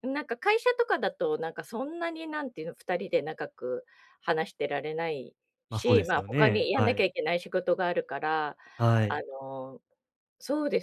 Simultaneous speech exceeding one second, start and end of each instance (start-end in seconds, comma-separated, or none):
5.7-7.0